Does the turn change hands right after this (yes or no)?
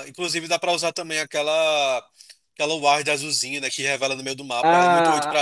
yes